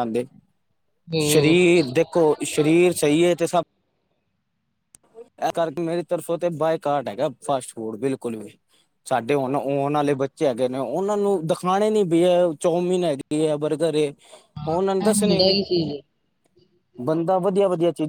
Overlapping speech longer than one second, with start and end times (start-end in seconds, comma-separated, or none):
none